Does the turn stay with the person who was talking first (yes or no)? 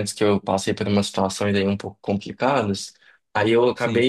yes